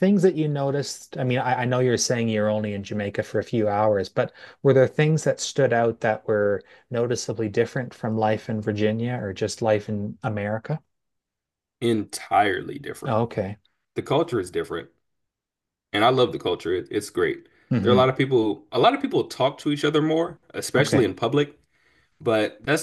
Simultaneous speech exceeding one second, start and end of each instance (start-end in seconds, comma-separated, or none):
none